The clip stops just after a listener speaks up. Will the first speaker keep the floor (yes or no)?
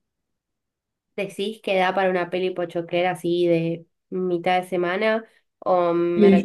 no